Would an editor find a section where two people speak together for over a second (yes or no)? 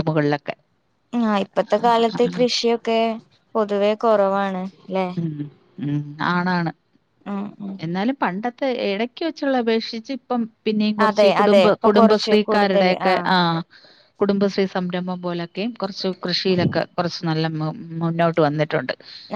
yes